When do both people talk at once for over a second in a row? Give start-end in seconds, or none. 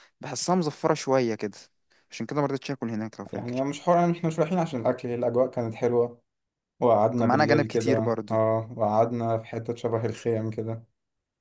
7.2-8.4